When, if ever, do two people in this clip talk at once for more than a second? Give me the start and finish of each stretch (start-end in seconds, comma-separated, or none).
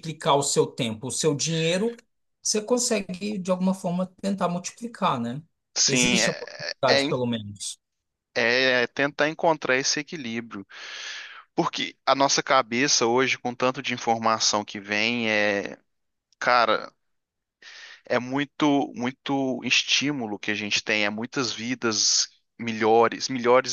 5.9-7.2